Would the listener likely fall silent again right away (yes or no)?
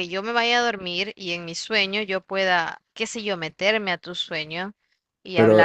no